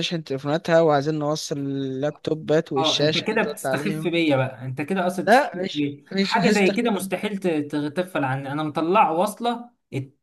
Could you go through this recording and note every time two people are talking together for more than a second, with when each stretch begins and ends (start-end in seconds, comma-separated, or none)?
2.8-4.1, 5.3-6.9